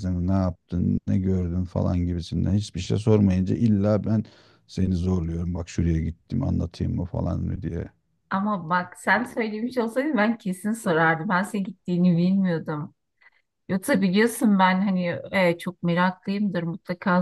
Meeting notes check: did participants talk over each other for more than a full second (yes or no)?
no